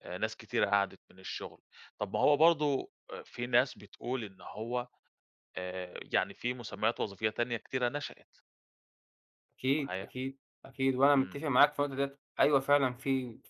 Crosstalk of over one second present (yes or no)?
no